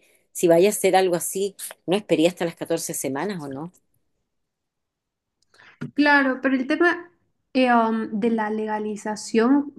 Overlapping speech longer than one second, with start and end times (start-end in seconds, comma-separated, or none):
none